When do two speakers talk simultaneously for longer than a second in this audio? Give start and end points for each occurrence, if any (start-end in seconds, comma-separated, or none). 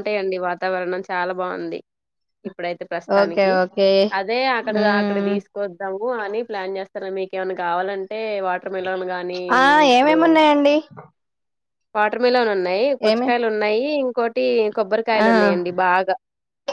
none